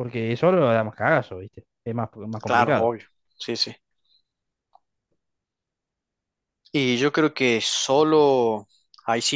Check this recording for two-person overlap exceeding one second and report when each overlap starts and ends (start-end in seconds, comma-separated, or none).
none